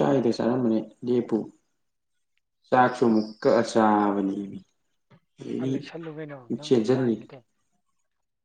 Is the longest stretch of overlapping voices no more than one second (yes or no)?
no